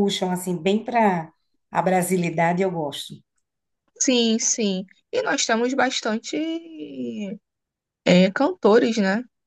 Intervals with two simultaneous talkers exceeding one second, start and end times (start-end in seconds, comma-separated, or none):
none